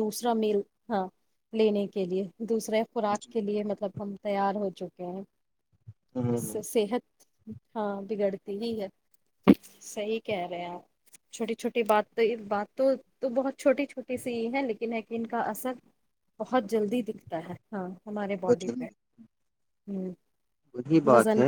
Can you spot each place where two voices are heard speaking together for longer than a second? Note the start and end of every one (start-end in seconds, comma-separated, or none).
none